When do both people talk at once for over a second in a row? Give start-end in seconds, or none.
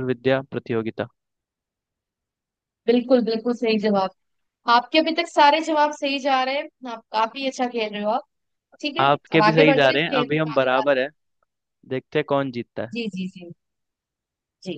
9.0-11.1